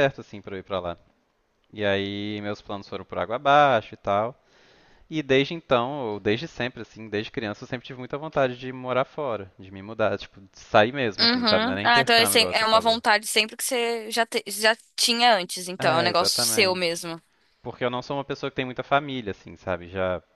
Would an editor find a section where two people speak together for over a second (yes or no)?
yes